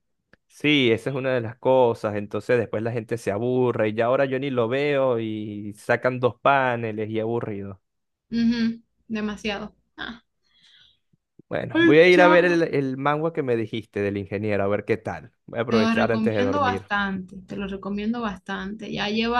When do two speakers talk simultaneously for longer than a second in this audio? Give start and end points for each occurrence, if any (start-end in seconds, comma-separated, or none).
15.7-16.9